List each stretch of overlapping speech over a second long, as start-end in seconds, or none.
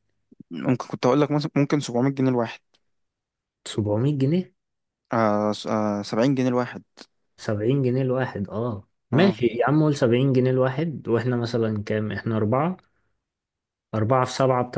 none